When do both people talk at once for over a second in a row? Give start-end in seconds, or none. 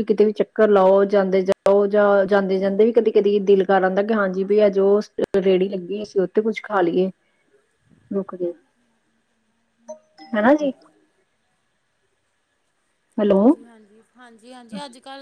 none